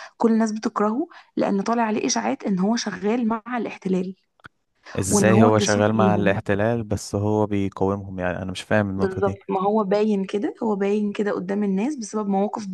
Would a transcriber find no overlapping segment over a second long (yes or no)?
no